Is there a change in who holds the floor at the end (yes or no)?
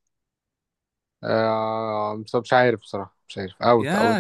yes